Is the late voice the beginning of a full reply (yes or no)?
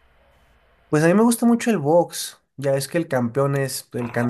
yes